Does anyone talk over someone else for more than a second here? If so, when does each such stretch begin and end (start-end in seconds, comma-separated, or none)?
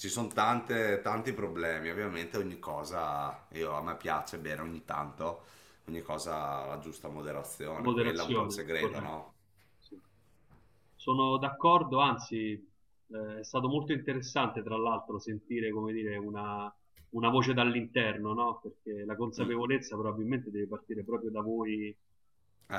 7.7-9.2